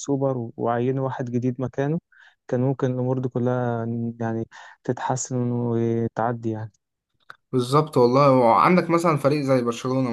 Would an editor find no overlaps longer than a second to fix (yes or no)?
yes